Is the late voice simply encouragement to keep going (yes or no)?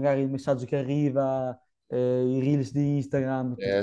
no